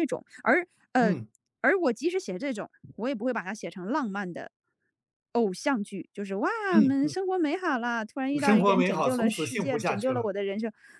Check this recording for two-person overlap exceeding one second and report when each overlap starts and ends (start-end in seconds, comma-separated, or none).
8.3-10.3